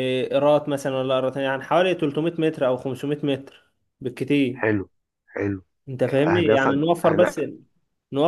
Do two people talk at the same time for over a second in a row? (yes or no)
yes